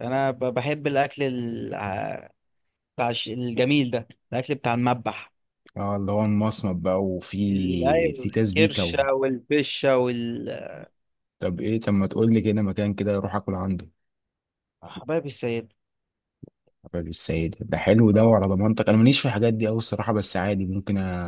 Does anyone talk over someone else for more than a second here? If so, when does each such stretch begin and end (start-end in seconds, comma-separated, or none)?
7.5-8.9